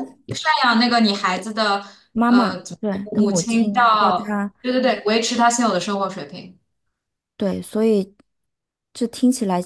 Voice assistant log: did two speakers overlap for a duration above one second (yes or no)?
yes